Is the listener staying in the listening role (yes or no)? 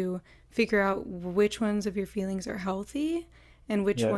yes